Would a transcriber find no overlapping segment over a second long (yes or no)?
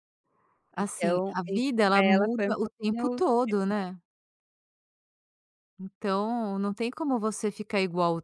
no